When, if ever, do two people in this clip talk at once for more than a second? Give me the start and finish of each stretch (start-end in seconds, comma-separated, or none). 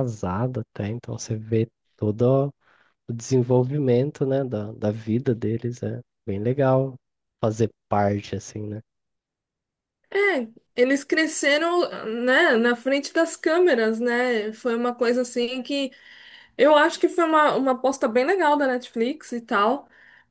none